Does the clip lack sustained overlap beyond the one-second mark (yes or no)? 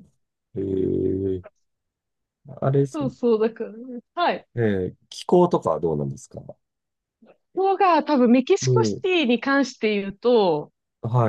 yes